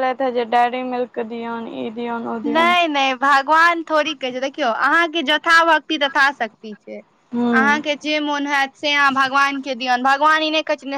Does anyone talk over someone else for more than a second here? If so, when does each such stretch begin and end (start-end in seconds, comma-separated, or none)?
none